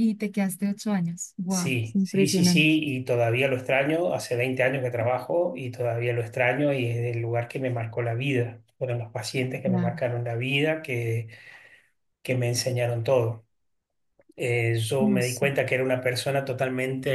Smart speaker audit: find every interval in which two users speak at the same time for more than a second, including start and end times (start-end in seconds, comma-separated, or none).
1.5-2.8